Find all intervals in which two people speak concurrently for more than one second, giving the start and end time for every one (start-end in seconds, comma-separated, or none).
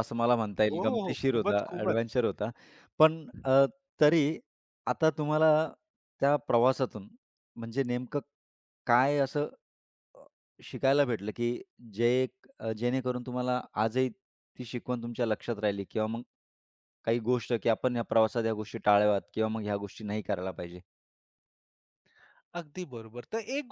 0.7-2.2